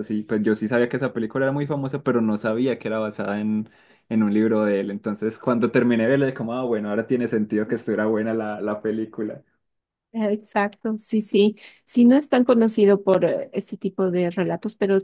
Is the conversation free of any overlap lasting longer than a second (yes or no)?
yes